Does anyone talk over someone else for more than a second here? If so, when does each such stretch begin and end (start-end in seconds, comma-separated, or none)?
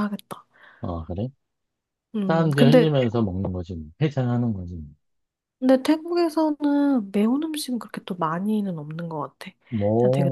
none